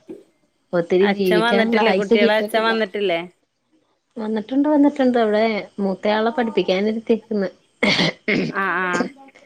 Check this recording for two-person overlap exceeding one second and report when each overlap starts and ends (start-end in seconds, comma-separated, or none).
1.1-2.7